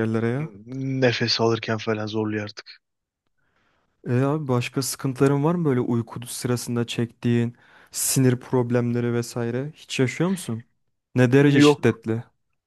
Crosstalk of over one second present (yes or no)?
no